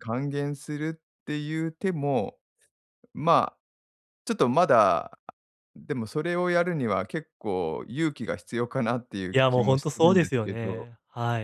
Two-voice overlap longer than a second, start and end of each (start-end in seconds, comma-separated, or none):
9.3-10.9